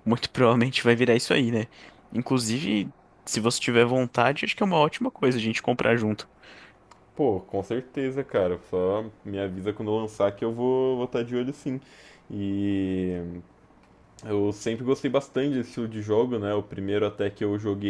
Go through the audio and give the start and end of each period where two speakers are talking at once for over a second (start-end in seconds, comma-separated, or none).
none